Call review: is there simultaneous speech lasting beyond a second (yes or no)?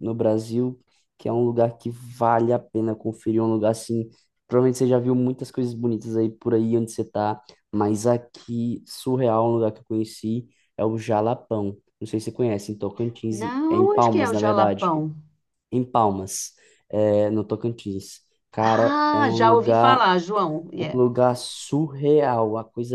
yes